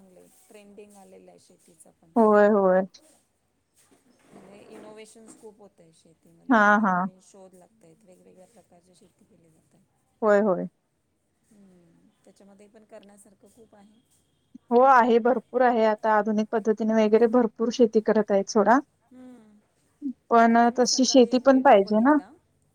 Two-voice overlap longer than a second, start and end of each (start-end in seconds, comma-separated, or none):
20.5-22.2